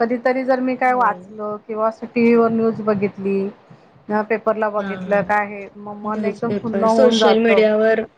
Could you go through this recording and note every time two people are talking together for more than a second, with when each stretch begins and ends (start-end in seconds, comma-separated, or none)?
6.0-7.5